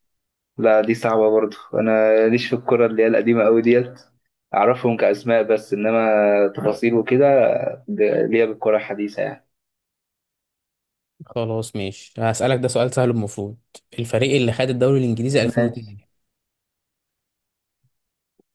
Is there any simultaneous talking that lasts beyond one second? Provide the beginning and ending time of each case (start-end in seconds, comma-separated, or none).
none